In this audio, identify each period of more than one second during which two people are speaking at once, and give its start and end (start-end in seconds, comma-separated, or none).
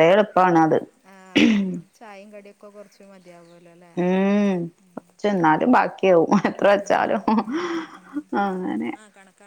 none